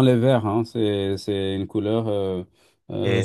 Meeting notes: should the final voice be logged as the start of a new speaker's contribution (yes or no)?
yes